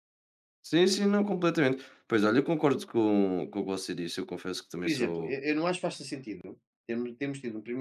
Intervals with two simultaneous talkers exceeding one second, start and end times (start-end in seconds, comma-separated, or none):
none